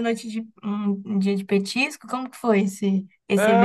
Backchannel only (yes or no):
no